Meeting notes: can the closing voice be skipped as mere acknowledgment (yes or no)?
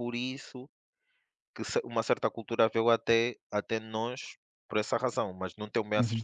no